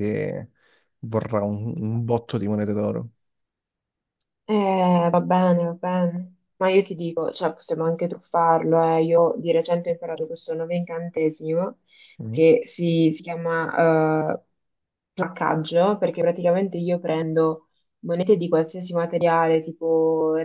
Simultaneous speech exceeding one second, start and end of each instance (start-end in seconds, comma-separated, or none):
none